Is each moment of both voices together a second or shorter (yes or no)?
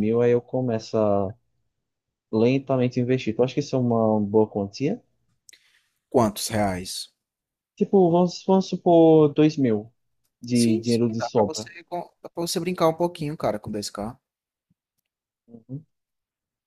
no